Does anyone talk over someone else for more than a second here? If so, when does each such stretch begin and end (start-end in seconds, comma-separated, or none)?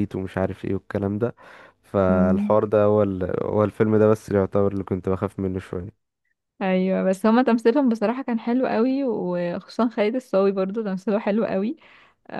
none